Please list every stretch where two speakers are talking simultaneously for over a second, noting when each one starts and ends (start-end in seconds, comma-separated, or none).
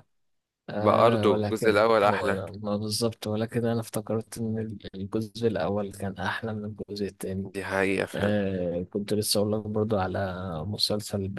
0.8-2.4